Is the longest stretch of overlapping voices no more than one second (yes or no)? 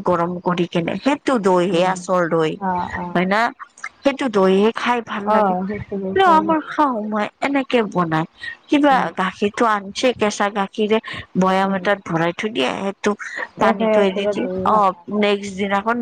no